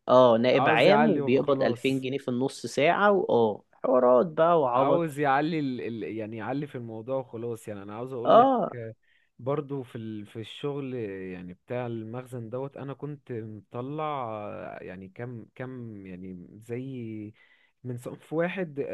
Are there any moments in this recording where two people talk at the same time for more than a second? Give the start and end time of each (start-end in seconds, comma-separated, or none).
0.5-2.1